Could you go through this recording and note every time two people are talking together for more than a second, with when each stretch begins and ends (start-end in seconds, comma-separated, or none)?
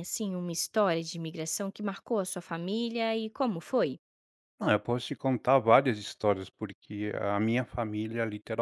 none